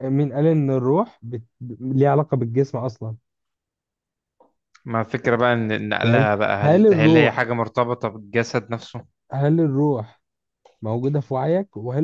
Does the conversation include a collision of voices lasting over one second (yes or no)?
yes